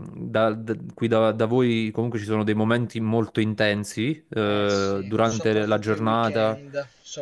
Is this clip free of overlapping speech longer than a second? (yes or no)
no